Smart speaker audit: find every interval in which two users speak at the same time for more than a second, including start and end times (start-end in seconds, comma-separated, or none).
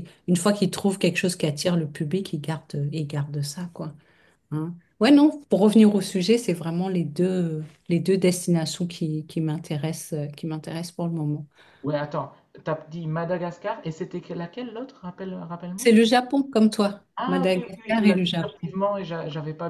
17.1-18.7